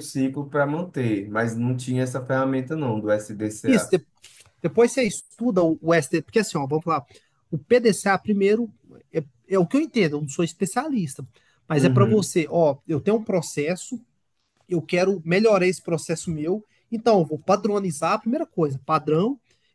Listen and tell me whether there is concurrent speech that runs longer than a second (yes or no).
no